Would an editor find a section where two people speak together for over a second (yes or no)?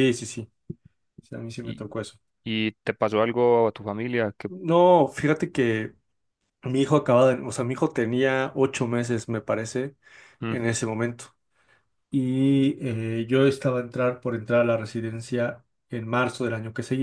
no